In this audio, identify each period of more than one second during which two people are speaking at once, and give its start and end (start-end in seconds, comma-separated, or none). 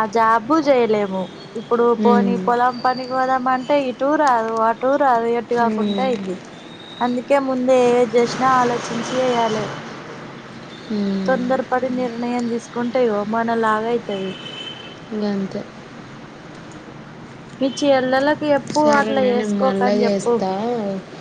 18.8-20.3